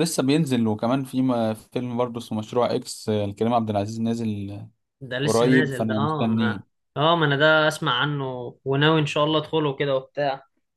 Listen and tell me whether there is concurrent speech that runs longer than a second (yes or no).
yes